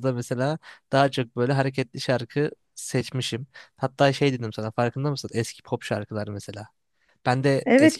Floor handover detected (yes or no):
no